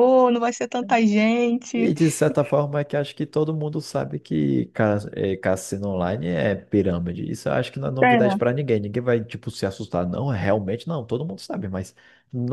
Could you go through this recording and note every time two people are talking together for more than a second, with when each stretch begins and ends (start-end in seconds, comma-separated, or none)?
none